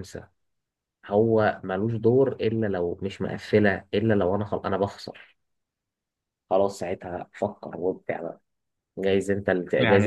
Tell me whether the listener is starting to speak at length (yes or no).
yes